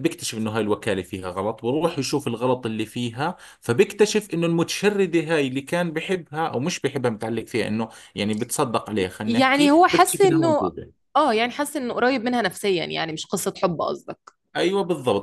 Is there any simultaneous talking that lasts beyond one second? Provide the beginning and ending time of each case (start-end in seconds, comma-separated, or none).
9.2-10.7